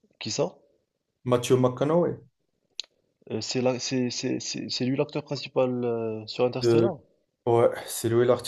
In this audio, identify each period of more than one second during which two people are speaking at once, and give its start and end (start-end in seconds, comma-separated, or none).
none